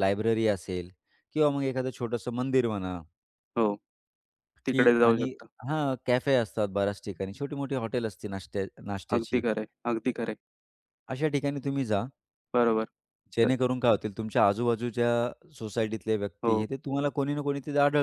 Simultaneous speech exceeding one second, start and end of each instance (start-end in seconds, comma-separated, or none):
none